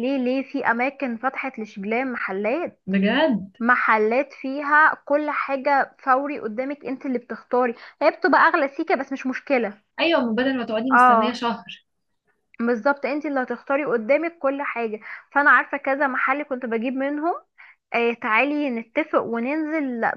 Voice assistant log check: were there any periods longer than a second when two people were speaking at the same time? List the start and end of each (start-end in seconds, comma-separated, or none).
none